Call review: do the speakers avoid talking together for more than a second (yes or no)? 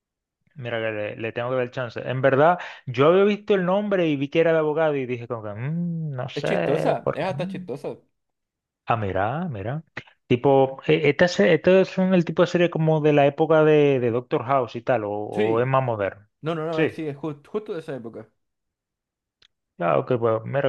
no